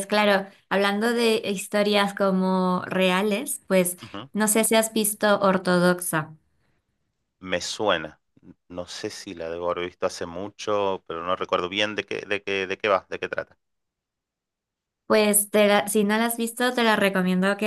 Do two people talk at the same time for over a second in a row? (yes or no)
no